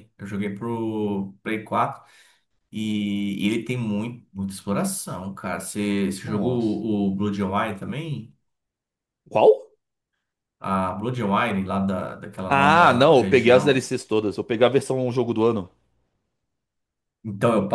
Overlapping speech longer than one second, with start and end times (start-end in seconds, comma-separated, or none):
12.5-13.9